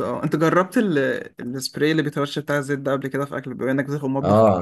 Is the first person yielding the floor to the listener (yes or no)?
yes